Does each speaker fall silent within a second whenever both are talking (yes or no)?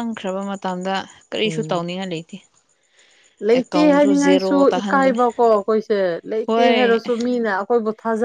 no